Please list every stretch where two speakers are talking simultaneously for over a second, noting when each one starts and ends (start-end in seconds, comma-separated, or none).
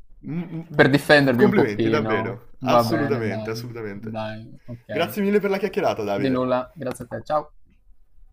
1.2-4.2